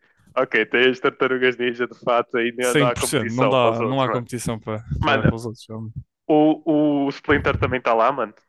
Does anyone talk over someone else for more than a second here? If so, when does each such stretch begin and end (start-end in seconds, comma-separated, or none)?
2.6-4.2